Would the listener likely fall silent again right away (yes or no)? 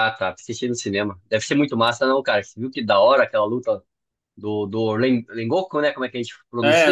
no